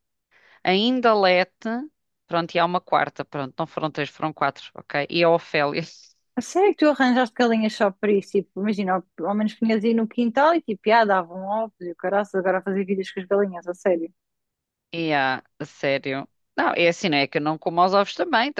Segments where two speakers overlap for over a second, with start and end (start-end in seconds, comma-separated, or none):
none